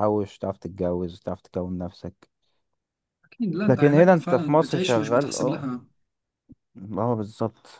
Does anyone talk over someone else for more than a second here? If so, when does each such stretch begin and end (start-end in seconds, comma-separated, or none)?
3.7-5.6